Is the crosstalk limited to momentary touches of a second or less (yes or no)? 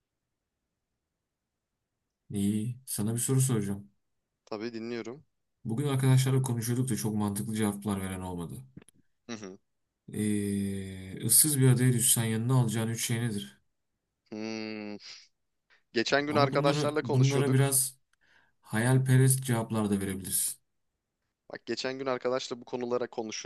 no